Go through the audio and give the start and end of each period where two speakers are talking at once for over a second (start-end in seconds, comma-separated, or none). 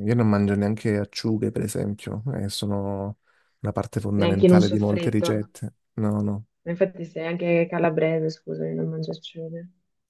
4.2-5.5